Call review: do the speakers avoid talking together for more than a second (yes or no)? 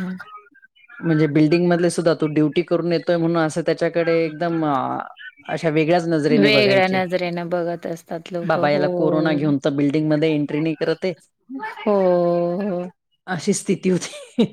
yes